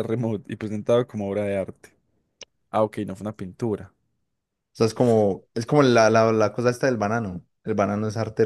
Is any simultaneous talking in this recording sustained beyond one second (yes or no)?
no